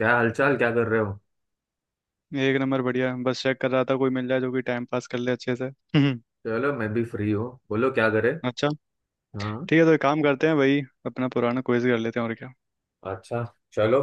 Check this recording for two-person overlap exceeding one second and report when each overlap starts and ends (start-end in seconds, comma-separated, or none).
none